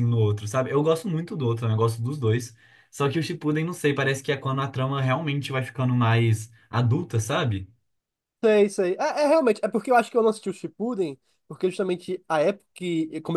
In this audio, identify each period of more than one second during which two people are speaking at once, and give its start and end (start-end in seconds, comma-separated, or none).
none